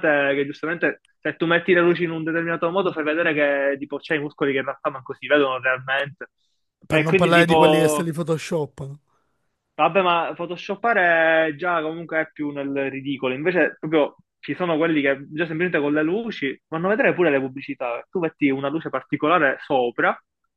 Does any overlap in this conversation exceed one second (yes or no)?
yes